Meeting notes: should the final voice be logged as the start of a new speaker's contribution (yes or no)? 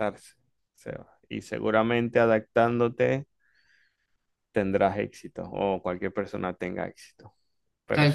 yes